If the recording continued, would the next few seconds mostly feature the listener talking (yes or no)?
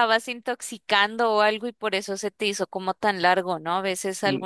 no